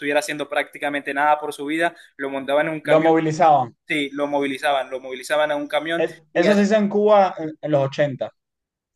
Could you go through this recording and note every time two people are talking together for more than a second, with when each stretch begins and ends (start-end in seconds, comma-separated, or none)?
none